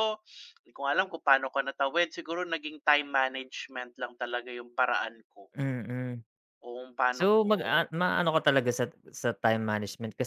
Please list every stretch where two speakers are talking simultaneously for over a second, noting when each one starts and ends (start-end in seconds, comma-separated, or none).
none